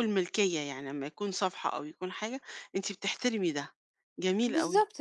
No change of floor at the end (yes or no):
no